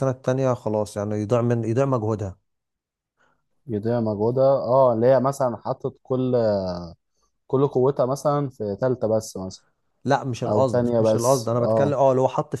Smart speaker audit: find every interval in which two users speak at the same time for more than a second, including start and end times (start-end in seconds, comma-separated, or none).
10.5-12.0